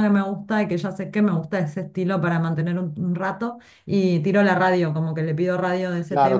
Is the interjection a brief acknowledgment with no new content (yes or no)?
no